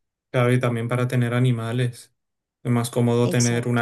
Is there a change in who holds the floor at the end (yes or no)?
no